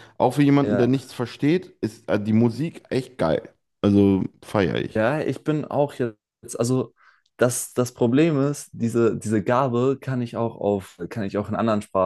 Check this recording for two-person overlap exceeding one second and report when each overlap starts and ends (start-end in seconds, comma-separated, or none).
none